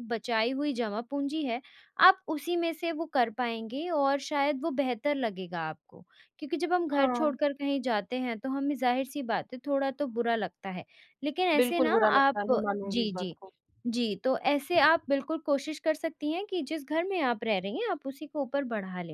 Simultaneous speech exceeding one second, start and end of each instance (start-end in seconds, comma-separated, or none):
11.6-13.4